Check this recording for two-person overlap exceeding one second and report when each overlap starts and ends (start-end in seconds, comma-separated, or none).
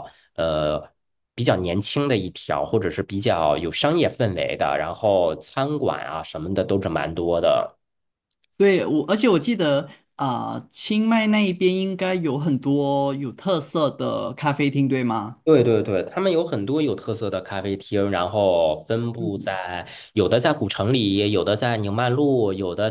none